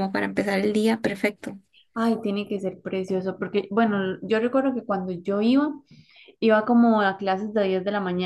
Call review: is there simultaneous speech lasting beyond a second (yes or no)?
no